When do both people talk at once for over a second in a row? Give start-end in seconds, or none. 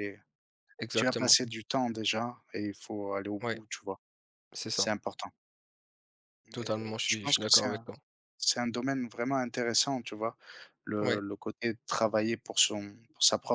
6.5-7.9